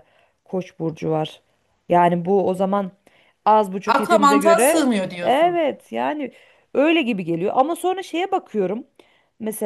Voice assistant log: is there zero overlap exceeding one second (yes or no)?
no